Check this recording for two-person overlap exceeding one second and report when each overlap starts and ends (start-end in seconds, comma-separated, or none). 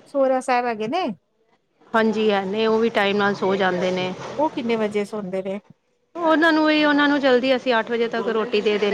none